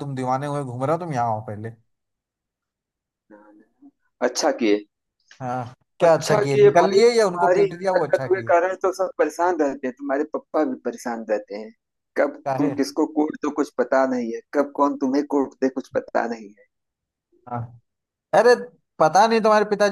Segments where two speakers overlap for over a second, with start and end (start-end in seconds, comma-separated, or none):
6.0-8.5